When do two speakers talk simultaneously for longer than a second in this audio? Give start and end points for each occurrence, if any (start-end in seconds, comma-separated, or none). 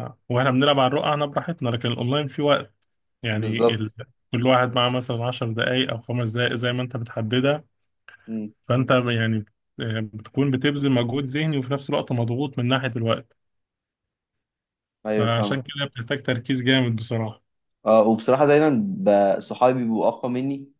none